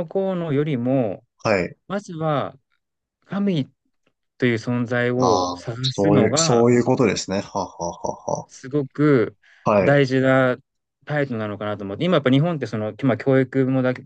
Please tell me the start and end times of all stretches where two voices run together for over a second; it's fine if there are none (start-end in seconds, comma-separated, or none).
5.2-6.6